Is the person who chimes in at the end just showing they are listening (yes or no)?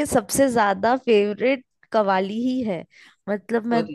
yes